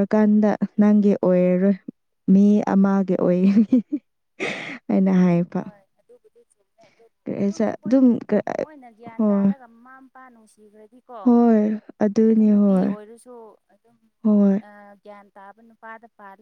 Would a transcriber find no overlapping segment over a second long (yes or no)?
yes